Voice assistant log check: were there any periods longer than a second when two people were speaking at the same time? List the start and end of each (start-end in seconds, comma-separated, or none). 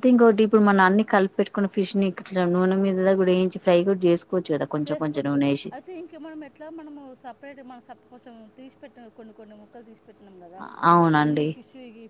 none